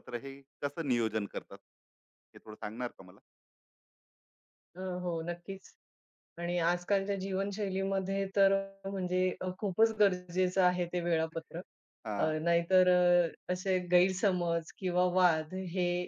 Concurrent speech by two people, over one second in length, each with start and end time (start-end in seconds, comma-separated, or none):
none